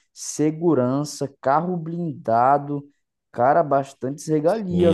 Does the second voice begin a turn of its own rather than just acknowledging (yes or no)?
yes